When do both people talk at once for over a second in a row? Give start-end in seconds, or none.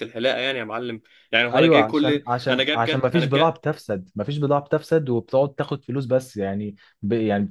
1.5-3.5